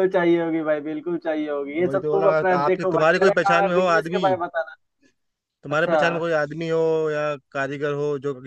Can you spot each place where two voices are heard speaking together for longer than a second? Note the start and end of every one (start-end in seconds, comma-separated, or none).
1.7-4.3